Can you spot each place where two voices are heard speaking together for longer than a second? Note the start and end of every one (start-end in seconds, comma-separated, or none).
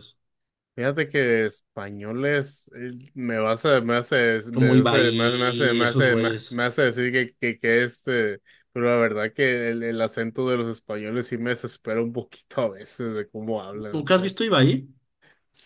4.5-6.6